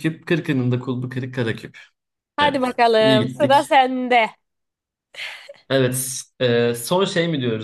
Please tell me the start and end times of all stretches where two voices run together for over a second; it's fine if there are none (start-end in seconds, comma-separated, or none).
2.4-3.7